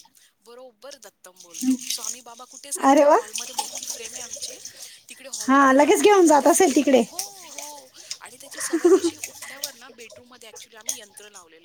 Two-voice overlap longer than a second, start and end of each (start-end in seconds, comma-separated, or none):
5.5-7.0